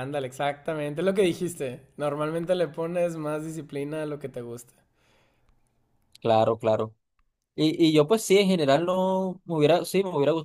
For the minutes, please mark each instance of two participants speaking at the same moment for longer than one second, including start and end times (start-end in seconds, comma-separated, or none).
none